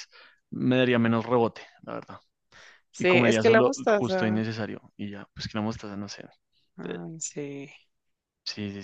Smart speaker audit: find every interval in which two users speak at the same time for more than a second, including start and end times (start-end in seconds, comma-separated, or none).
3.0-4.4